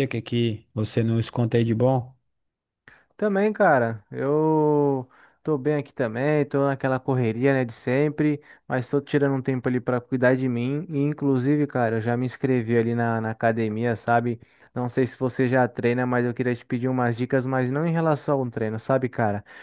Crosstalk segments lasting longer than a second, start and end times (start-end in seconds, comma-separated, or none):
none